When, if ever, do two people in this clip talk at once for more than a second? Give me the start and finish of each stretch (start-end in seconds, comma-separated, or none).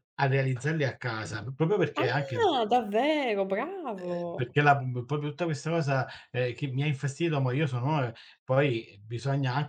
none